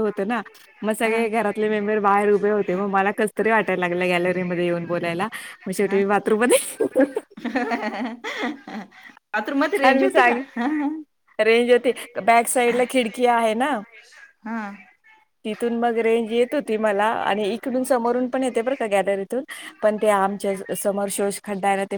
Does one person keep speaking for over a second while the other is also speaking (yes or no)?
no